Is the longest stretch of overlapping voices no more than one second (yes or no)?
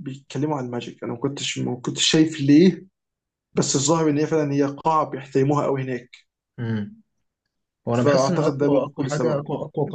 no